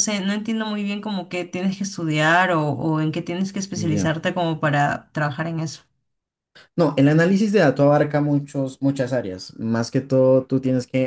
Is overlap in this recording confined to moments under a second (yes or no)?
yes